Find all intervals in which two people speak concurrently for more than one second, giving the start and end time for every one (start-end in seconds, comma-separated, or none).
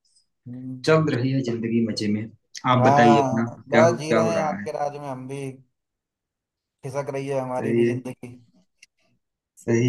2.8-4.7